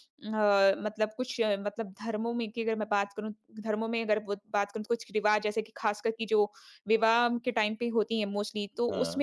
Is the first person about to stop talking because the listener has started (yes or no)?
no